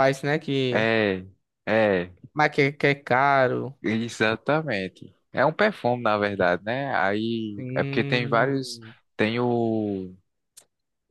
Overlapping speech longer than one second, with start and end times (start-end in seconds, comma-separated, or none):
7.6-8.8